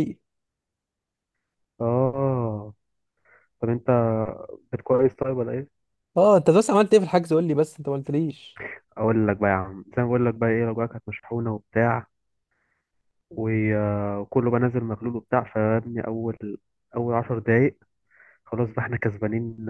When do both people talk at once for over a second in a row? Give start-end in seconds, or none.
none